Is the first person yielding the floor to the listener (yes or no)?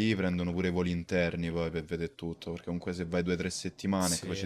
no